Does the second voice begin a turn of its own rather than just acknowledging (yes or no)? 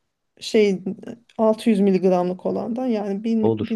no